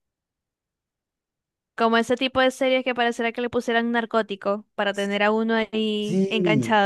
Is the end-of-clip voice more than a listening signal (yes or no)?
yes